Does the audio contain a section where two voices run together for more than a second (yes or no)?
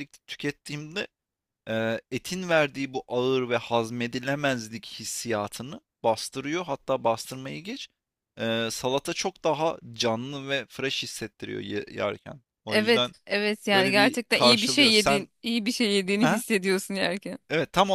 yes